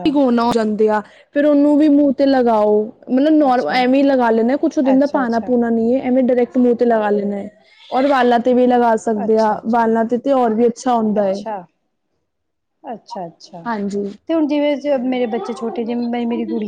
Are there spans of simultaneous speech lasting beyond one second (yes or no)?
no